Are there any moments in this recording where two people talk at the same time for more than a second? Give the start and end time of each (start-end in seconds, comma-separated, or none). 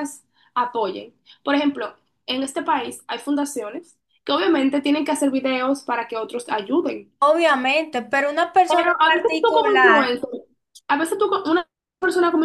8.7-10.1